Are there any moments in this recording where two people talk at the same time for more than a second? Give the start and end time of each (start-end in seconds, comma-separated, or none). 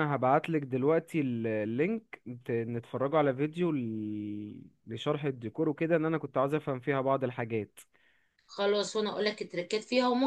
none